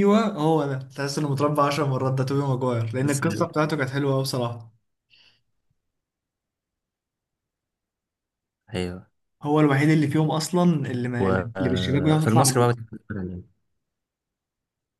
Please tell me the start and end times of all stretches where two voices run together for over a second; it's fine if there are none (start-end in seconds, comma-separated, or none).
11.2-12.7